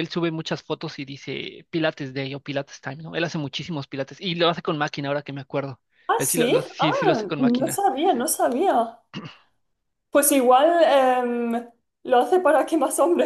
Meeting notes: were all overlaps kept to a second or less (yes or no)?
no